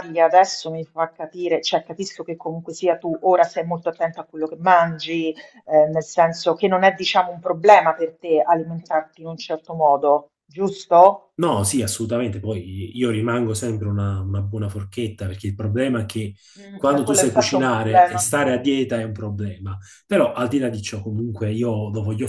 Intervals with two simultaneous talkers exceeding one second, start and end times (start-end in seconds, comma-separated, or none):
16.8-18.3